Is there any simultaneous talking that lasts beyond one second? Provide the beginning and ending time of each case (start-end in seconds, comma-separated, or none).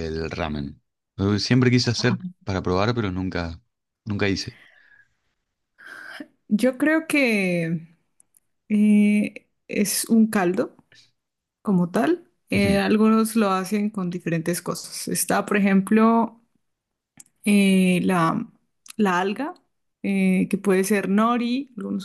none